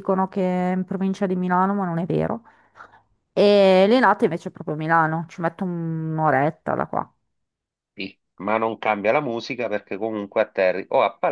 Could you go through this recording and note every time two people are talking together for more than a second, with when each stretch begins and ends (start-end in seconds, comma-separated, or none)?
none